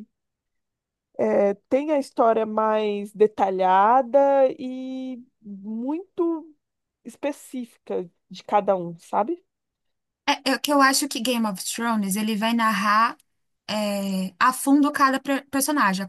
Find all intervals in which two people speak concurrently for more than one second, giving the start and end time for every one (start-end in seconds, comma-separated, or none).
none